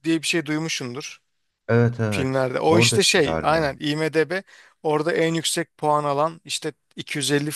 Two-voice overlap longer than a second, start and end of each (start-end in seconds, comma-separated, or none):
2.1-3.7